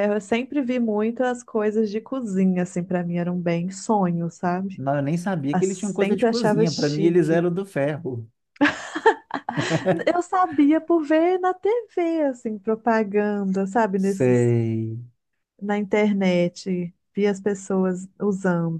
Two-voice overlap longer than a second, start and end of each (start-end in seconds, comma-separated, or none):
5.5-7.5